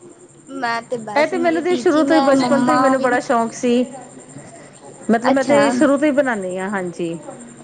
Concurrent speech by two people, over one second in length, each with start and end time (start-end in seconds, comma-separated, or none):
1.2-3.1